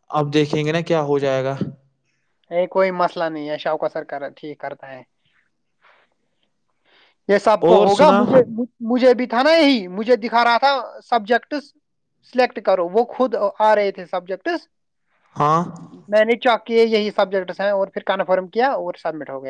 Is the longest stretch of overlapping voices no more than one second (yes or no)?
yes